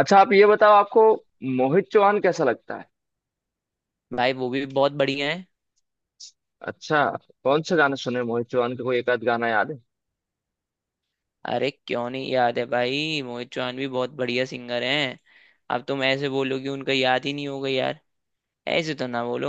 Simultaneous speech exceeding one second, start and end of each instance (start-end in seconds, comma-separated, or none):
none